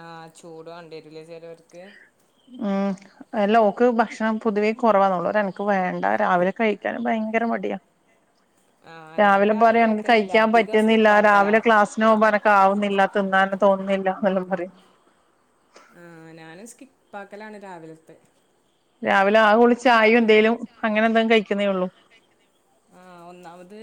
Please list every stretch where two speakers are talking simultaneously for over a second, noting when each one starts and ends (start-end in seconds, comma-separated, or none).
9.2-11.5